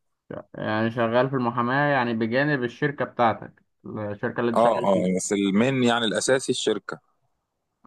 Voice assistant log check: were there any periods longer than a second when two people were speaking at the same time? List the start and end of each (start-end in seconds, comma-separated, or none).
none